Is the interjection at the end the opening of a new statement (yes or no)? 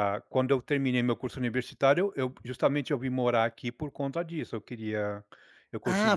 yes